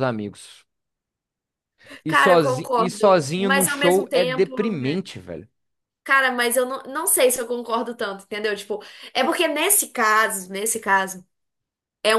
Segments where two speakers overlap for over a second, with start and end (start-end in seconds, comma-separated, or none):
2.1-5.0